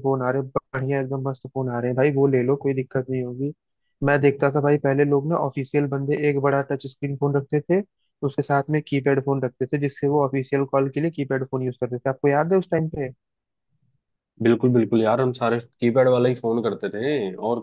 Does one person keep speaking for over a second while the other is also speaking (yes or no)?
no